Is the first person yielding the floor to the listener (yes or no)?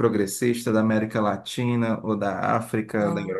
yes